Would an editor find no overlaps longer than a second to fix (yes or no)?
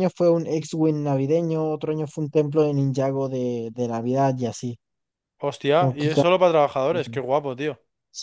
yes